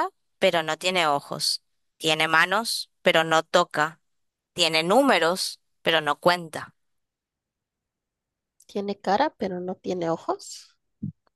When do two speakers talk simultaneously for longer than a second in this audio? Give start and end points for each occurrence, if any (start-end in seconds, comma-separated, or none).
none